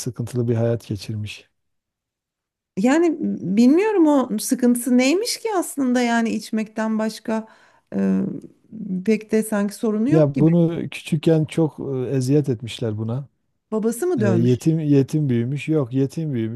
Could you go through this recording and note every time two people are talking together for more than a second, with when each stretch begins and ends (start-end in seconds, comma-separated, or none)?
none